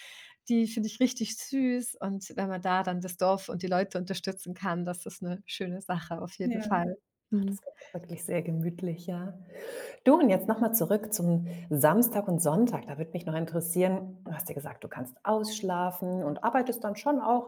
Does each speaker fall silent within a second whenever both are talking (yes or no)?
yes